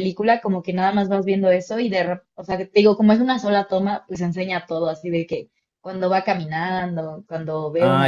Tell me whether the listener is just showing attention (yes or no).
no